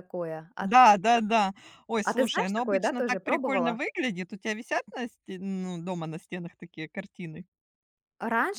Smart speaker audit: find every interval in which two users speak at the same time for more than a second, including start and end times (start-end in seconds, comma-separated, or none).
2.0-3.8